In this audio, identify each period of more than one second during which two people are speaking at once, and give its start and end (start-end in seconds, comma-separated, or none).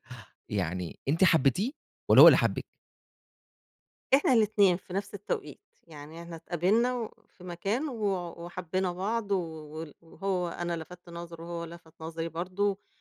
none